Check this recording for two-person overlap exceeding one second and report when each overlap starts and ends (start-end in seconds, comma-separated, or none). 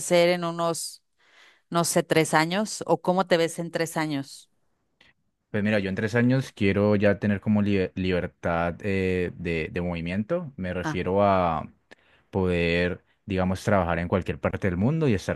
none